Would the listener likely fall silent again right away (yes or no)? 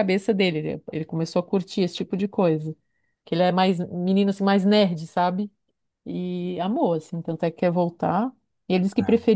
yes